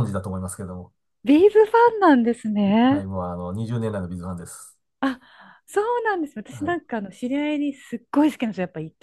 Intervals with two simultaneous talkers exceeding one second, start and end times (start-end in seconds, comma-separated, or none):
none